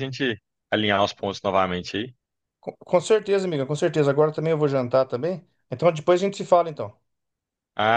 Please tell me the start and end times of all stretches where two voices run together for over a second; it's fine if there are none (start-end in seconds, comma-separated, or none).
none